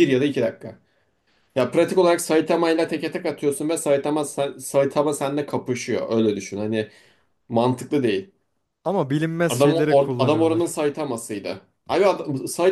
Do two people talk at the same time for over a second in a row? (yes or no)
yes